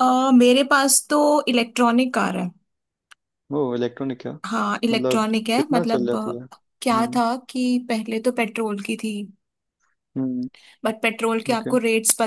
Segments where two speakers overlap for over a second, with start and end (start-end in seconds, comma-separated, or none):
4.9-7.2